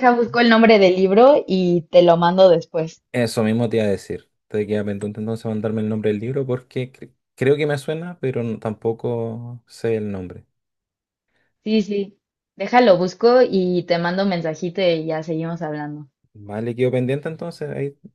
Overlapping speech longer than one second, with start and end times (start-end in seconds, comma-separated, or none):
none